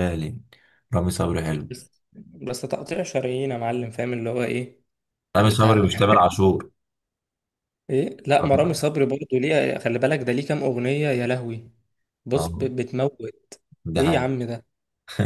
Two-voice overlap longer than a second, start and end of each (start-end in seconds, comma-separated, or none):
none